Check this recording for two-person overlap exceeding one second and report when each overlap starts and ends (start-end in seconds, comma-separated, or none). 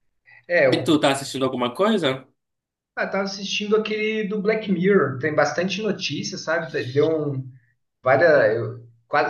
none